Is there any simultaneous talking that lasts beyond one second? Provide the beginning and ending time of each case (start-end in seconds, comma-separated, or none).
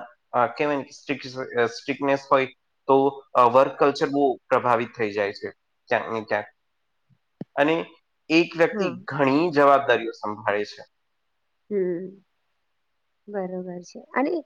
none